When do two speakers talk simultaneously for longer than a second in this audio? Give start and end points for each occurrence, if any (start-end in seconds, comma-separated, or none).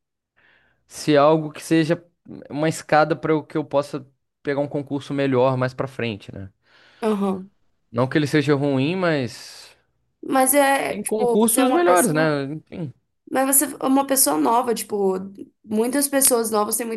10.8-12.3